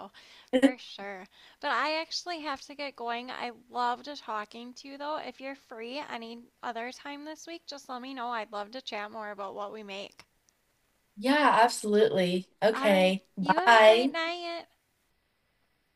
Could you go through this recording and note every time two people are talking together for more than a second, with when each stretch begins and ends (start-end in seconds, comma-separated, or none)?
12.7-14.1